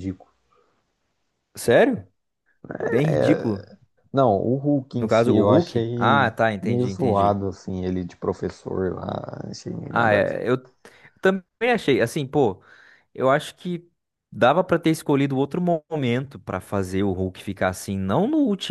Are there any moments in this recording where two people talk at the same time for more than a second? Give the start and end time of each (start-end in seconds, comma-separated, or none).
5.0-7.4